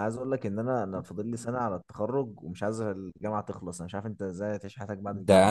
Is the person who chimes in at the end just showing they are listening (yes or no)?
no